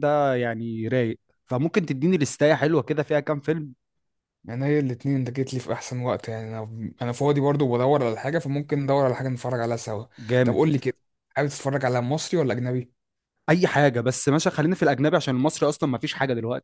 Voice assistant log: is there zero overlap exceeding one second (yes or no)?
yes